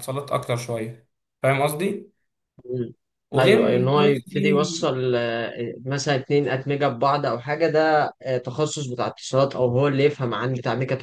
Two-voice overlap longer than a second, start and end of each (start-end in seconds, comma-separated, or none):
3.4-5.0